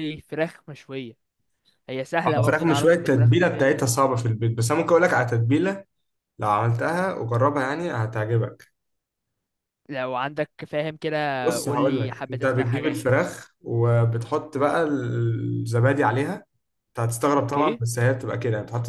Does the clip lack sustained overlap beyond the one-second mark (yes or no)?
no